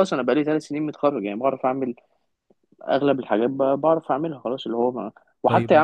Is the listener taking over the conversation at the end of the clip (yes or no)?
no